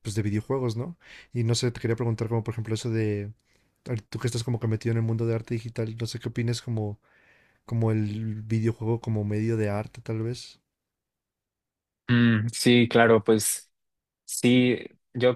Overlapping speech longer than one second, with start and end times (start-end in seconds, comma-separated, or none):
none